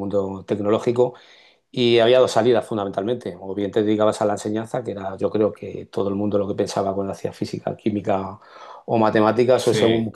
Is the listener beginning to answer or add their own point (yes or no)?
no